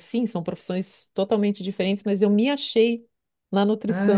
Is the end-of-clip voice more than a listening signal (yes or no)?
yes